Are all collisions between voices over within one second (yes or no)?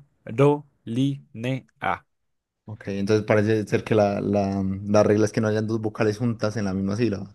yes